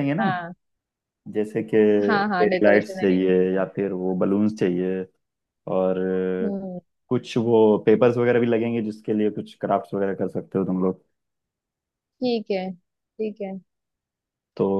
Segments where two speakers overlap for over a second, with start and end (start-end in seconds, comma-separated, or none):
2.4-3.9